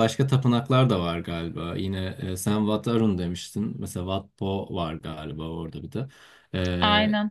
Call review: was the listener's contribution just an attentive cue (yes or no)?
yes